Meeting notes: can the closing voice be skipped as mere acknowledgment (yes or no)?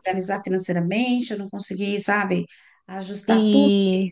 yes